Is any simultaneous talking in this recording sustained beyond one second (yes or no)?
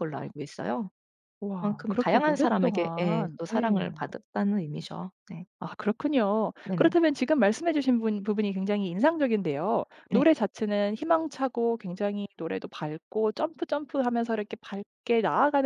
yes